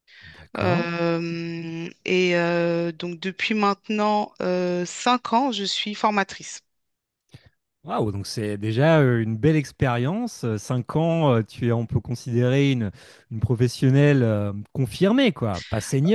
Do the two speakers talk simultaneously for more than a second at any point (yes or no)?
no